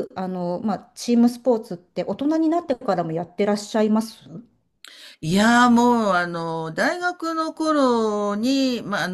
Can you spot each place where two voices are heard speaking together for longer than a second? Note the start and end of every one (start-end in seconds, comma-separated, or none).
none